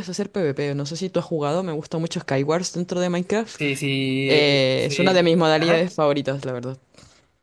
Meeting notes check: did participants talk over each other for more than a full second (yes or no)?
yes